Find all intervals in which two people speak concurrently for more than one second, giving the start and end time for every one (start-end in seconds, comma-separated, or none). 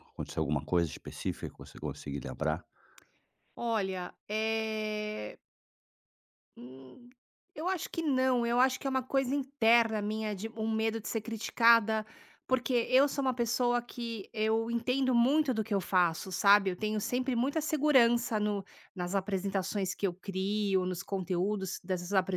none